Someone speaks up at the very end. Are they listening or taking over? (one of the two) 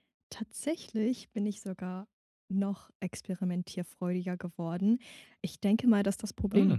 listening